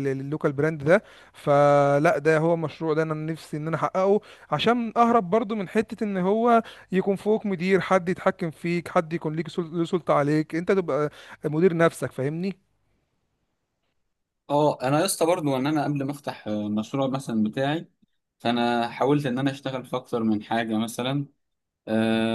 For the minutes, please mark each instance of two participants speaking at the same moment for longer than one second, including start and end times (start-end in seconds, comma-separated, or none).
none